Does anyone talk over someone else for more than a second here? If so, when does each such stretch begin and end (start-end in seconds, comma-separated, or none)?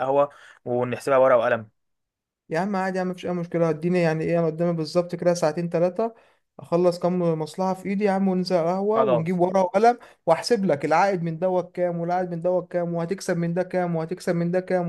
none